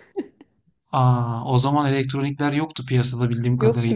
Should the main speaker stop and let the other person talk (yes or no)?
yes